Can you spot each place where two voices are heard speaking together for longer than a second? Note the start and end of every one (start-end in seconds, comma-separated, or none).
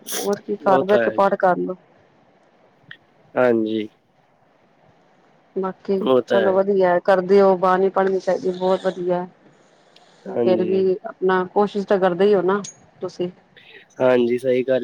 none